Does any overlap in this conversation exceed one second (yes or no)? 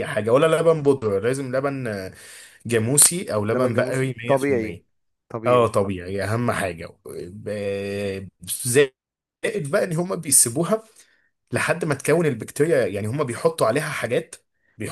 yes